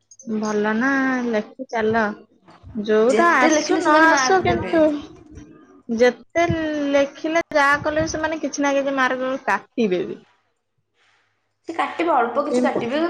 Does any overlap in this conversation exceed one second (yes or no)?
yes